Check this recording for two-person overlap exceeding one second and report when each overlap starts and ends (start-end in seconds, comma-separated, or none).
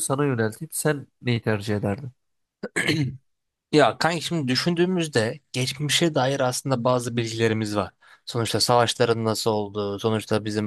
none